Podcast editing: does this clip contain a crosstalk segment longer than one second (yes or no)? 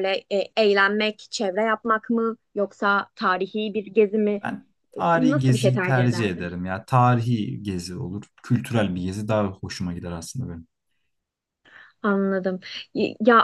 yes